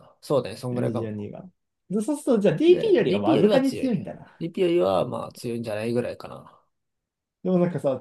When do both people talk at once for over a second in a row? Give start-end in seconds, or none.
2.7-4.4